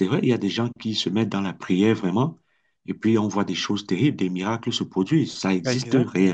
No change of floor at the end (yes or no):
no